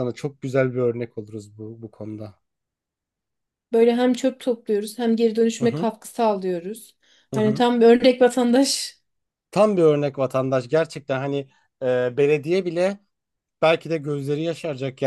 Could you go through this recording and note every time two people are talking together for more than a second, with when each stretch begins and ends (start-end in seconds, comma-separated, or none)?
none